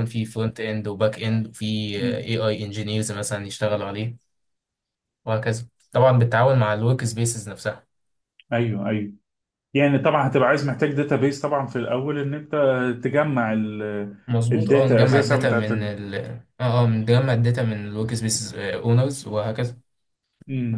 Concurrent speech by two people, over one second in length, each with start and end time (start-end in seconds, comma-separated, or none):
14.5-15.9